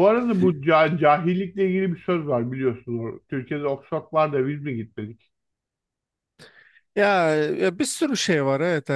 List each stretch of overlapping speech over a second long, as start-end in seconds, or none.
none